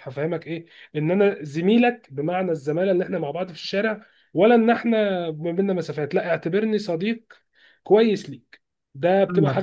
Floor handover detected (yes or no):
yes